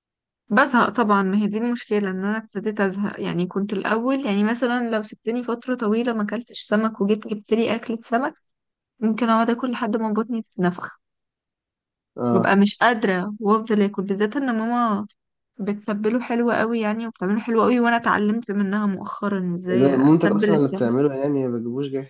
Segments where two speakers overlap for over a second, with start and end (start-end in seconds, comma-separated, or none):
19.7-21.0